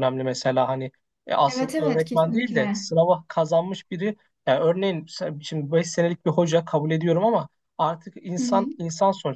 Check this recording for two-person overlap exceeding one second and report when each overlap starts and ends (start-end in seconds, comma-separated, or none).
1.5-2.9